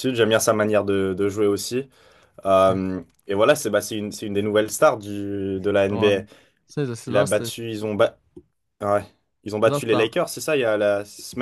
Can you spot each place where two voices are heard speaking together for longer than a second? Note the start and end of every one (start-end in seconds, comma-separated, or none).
none